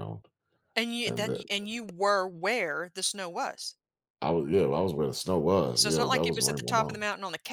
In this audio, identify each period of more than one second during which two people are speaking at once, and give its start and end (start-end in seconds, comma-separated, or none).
5.8-7.0